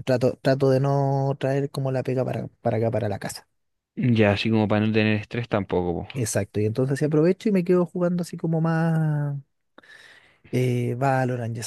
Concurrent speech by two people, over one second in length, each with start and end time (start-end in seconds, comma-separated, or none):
none